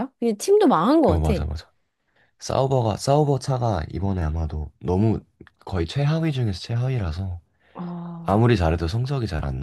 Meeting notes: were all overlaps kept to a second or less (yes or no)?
yes